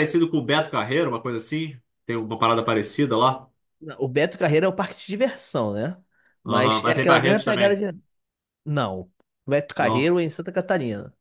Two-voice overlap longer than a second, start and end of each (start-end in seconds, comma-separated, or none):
6.5-7.8